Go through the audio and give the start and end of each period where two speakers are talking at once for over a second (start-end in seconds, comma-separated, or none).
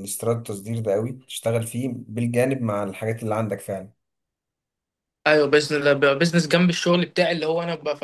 none